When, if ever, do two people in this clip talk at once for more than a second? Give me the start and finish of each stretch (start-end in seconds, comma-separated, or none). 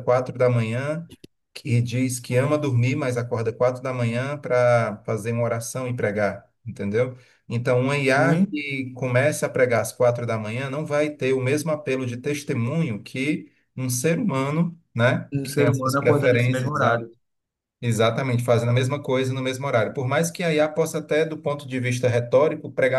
15.3-16.7